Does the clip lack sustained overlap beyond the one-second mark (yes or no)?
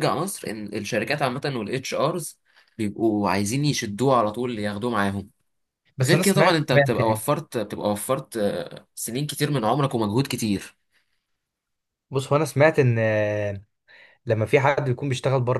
no